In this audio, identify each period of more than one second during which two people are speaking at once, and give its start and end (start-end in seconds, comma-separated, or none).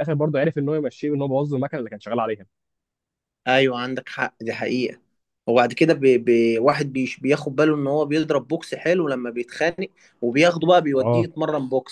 none